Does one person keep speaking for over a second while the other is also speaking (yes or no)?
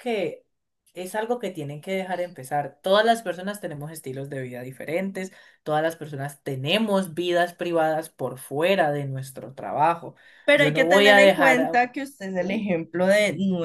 yes